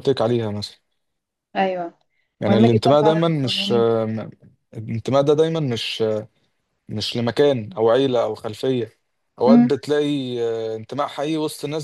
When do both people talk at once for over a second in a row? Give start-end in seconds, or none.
2.5-3.9